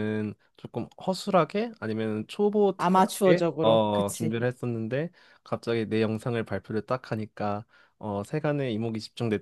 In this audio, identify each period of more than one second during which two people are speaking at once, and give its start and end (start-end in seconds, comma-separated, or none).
2.8-4.4